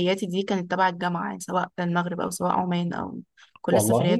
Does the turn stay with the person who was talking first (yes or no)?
yes